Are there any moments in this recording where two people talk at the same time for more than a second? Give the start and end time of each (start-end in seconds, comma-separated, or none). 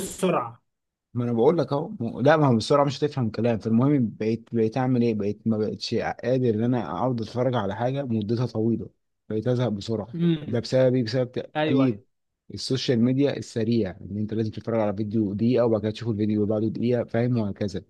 none